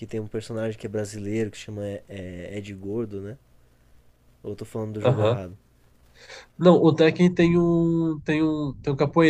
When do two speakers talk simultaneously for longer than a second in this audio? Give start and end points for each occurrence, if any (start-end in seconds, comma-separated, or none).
none